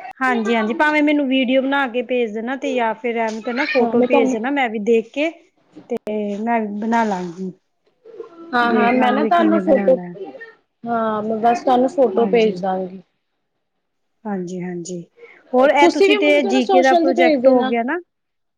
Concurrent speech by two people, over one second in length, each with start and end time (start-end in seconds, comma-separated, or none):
15.8-17.7